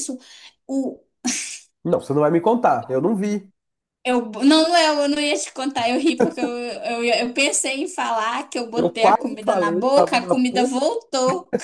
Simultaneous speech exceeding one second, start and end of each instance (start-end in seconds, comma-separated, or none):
8.7-10.7